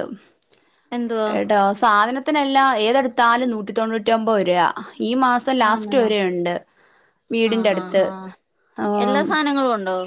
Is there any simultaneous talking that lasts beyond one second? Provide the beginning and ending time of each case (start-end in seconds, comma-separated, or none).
none